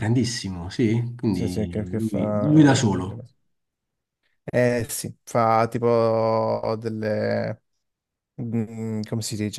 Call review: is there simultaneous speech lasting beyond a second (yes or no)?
yes